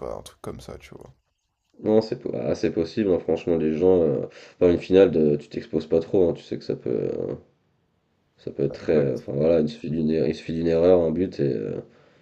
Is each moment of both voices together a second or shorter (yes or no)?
yes